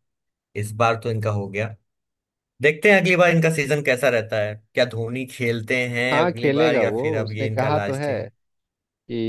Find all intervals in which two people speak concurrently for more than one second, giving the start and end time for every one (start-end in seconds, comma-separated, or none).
6.1-8.1